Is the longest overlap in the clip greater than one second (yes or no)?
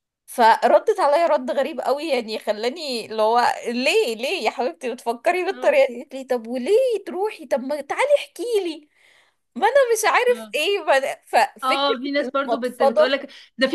yes